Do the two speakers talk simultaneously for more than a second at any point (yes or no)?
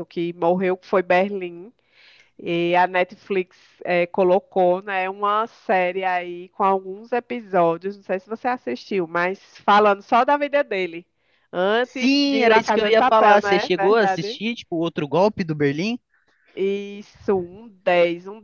yes